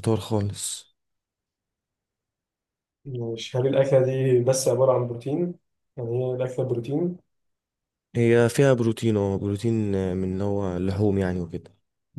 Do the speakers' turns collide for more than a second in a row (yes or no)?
no